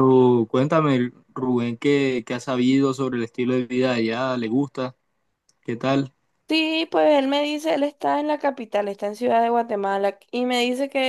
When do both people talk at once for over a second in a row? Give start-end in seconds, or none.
none